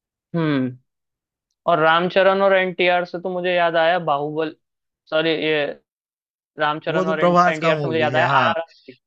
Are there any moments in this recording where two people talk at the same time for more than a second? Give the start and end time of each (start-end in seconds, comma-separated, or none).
6.9-8.5